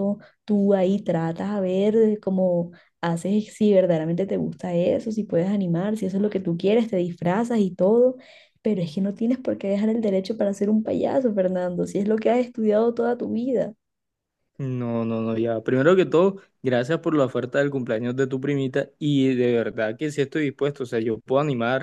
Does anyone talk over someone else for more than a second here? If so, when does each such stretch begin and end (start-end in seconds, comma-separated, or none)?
none